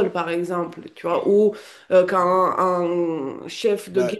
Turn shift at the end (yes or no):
no